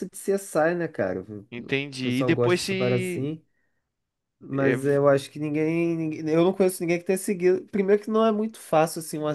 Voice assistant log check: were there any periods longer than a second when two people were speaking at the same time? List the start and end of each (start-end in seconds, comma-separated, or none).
1.5-3.3